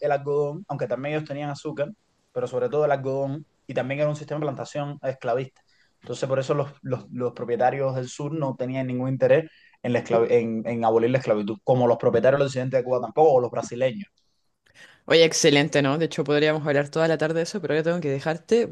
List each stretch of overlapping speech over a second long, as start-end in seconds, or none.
none